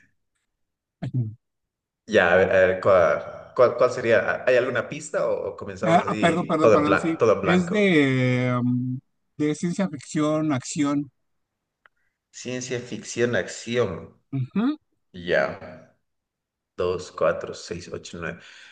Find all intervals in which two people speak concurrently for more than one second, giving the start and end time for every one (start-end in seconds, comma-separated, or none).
5.8-7.8